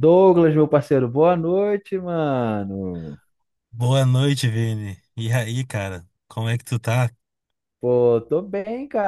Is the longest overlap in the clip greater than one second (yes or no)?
no